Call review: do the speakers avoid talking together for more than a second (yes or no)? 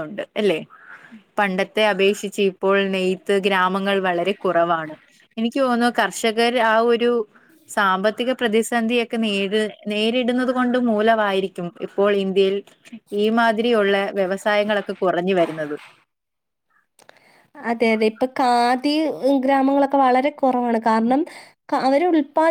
yes